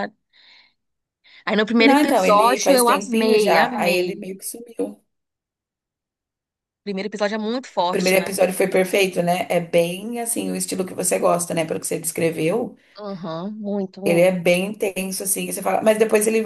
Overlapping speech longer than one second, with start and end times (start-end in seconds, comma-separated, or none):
1.8-4.2